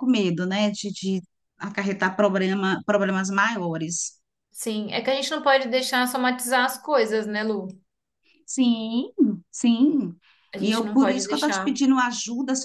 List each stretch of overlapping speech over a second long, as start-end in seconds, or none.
10.6-11.8